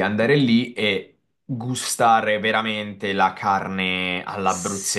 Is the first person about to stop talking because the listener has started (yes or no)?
yes